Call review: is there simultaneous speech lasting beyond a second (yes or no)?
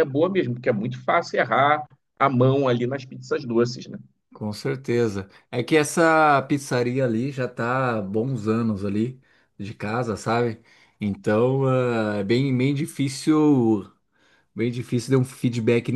no